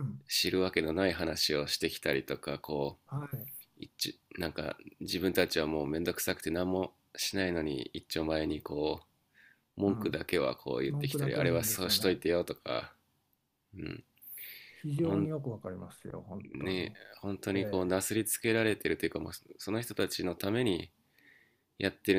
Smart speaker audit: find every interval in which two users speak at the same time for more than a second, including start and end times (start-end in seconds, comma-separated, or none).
10.9-12.2